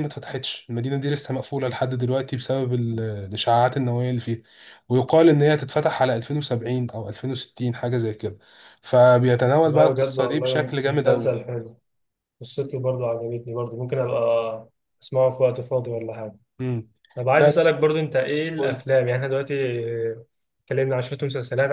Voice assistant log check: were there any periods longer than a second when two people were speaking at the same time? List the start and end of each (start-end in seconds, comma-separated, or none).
9.6-11.4